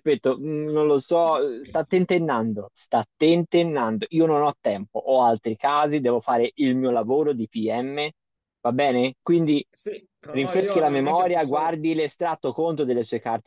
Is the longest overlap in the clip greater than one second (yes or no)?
yes